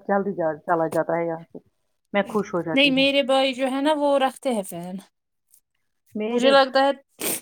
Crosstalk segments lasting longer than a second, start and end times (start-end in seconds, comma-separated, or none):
none